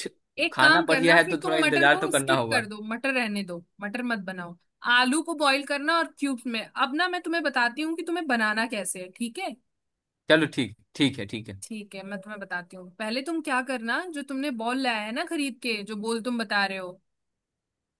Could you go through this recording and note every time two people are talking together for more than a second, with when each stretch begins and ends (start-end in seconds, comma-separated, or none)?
0.5-2.7